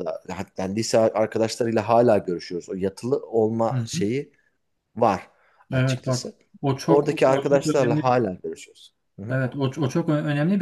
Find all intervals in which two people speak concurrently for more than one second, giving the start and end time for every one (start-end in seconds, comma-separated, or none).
6.9-8.2